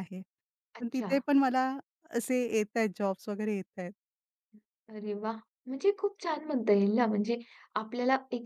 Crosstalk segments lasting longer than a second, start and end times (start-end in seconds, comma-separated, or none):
none